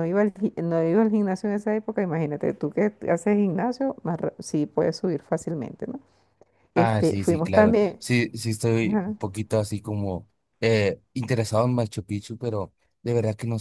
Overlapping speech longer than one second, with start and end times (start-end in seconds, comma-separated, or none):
6.8-8.0